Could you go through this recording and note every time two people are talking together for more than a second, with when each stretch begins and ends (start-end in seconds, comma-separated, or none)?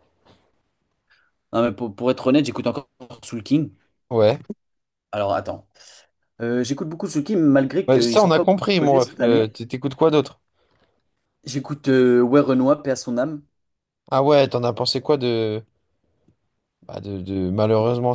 7.9-9.6